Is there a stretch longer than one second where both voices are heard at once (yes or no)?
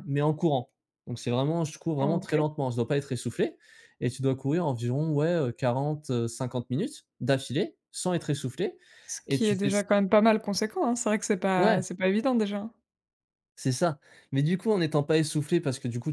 no